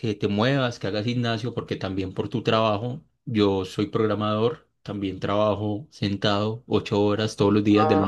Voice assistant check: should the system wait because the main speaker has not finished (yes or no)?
no